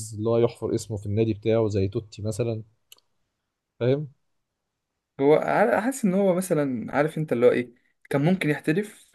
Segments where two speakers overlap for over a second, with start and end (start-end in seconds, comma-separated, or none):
none